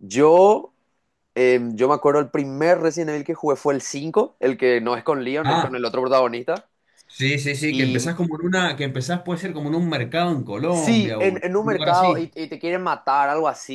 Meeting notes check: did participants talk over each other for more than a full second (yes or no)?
yes